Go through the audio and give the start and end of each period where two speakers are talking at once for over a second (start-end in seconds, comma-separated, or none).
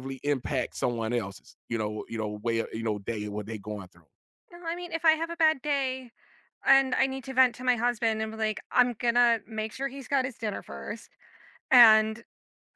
none